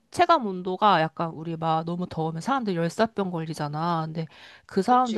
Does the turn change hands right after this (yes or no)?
no